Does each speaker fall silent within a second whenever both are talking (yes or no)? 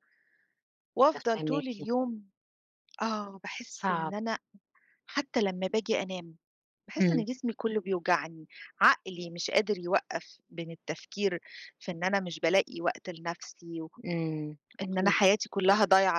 yes